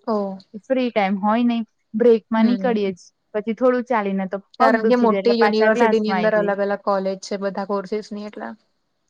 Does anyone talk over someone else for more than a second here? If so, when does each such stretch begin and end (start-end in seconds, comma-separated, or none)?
4.6-6.7